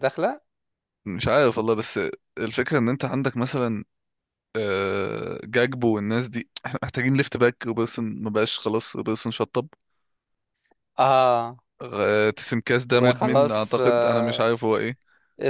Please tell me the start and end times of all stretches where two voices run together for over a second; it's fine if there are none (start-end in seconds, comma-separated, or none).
12.9-14.5